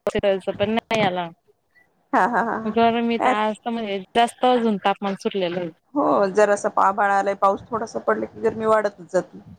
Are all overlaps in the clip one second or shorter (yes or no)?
yes